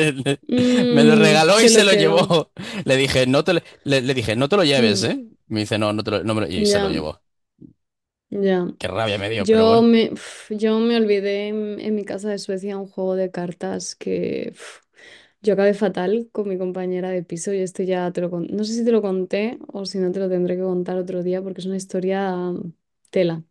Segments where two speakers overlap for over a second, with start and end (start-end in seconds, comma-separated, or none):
0.9-2.3